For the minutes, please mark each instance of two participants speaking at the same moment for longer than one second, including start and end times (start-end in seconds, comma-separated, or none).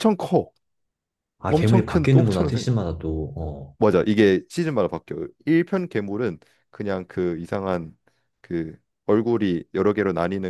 1.5-2.7